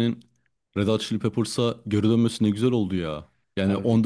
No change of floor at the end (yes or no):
yes